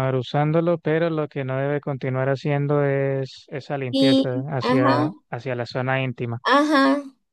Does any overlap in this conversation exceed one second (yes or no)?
yes